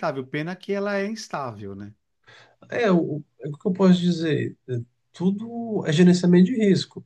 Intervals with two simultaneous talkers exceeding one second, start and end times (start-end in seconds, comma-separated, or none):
none